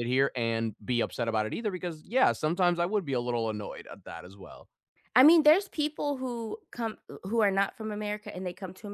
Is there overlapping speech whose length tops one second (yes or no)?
no